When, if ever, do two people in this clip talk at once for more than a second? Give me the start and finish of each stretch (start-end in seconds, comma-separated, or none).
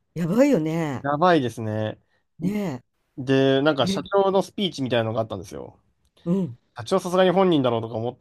none